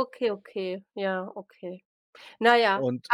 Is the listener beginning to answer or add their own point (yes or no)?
no